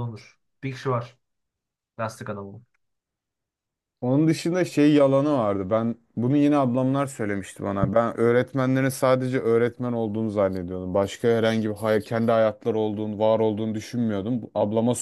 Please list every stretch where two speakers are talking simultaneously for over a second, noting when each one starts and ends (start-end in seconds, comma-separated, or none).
none